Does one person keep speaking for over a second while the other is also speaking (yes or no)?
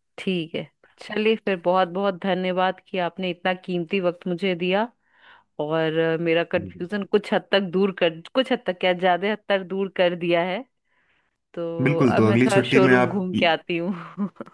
yes